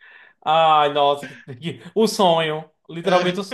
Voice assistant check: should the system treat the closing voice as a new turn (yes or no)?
no